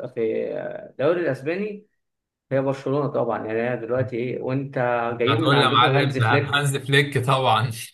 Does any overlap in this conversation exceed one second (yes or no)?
yes